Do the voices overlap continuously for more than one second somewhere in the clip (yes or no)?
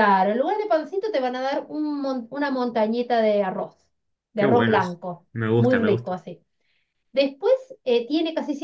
yes